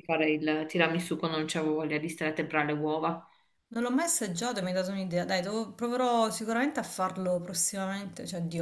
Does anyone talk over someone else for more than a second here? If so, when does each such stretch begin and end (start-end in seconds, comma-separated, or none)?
none